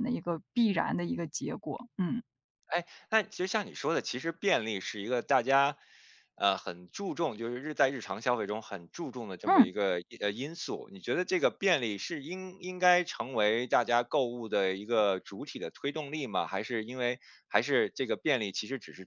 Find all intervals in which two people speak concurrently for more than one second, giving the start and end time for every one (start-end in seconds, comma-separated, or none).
none